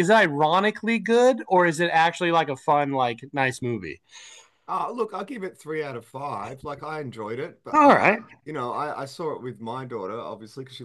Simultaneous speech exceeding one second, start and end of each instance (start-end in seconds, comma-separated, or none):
none